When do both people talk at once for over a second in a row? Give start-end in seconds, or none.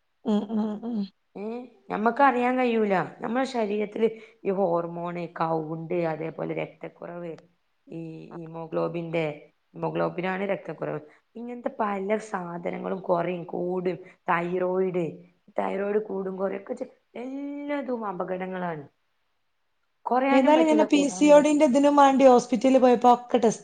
20.4-21.6